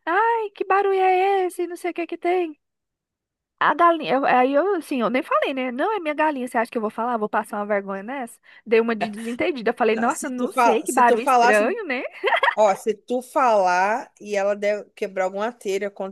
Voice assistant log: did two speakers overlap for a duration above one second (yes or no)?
yes